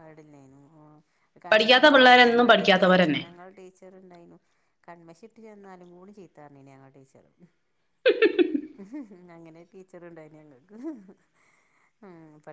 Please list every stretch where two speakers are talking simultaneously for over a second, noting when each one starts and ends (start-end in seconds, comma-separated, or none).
1.5-3.2